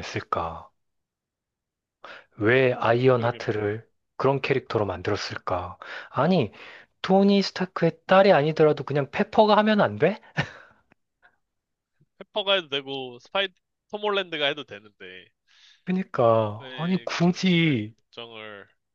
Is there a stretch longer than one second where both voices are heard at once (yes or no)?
yes